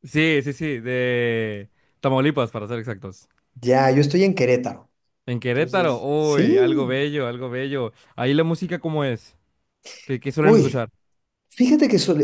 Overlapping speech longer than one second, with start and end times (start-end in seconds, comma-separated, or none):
5.5-7.0